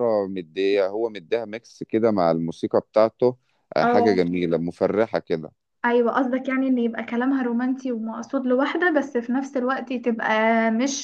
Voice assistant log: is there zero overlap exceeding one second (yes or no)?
yes